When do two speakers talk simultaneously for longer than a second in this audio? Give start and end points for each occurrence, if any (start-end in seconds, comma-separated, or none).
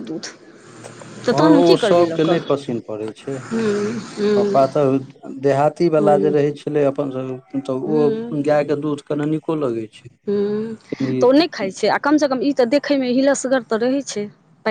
none